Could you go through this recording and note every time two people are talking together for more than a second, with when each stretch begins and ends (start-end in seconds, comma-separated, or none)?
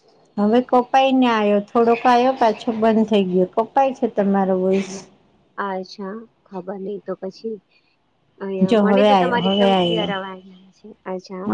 8.7-10.3